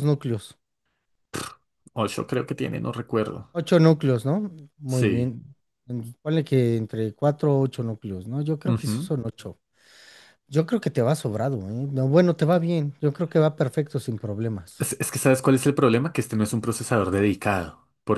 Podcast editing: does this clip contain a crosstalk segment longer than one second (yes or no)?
no